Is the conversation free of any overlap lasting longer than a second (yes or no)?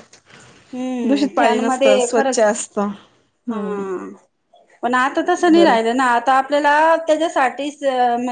no